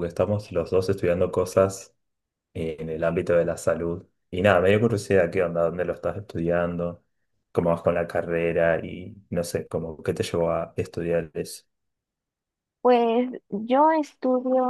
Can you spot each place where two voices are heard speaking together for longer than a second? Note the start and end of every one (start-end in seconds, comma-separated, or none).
none